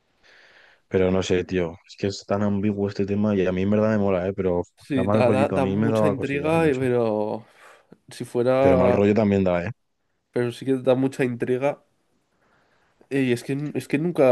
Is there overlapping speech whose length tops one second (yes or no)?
yes